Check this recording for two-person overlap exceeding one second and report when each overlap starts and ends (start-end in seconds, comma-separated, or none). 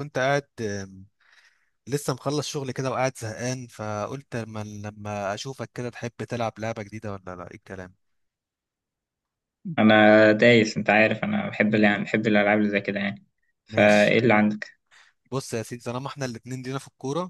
none